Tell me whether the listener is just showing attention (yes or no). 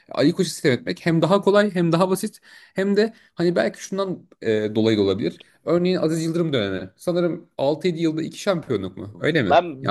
no